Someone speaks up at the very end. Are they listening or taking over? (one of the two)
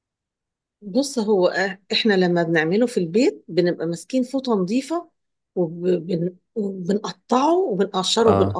listening